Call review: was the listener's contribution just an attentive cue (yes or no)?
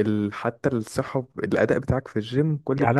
no